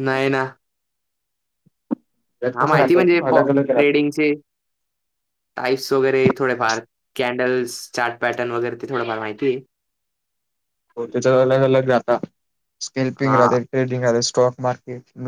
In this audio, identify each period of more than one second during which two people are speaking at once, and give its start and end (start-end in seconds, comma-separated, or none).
2.5-4.0